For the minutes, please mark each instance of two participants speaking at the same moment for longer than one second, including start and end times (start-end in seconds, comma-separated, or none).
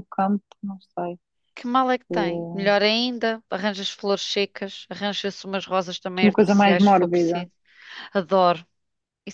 6.2-7.5